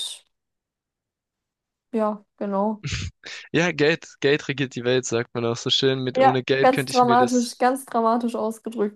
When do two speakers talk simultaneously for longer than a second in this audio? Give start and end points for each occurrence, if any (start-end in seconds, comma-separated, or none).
6.1-7.6